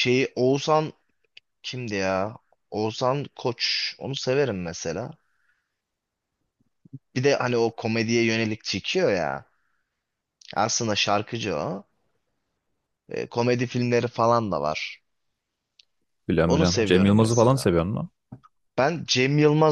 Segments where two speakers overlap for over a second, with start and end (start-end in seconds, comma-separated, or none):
16.4-17.7